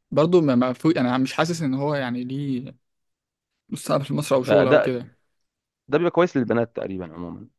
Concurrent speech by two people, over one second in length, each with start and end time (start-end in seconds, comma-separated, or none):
none